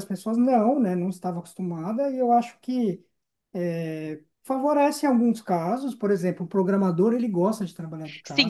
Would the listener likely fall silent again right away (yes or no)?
no